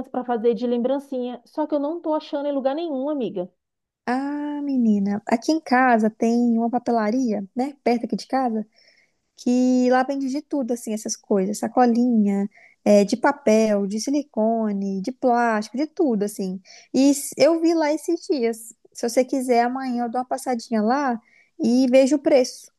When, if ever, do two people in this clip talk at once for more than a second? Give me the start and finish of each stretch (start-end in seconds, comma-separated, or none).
none